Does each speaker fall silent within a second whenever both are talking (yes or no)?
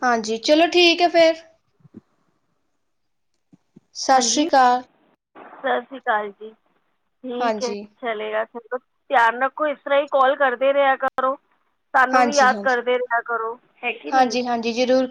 yes